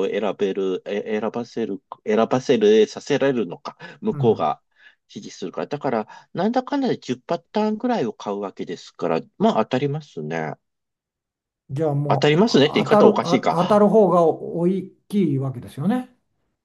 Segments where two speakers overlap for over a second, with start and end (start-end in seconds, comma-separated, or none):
12.1-13.9